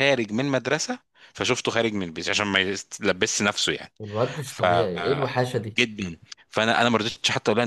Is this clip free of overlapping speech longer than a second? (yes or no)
yes